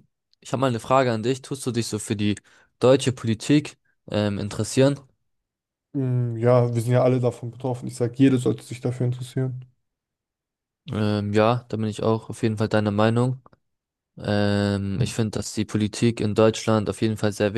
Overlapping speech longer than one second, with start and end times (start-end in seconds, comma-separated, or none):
none